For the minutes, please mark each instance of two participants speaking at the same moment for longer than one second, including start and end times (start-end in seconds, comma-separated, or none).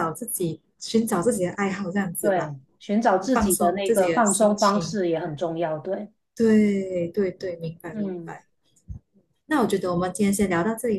3.3-5.0